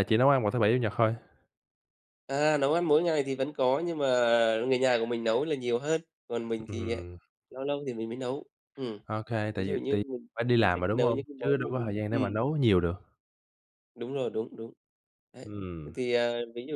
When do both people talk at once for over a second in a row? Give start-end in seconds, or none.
9.6-12.3